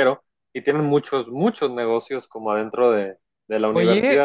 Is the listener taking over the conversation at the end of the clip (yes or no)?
yes